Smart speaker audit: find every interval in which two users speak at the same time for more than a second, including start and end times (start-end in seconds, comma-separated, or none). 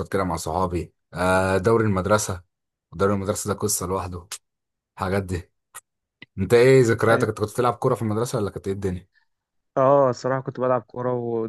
none